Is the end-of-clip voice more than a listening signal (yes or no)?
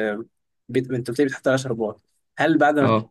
no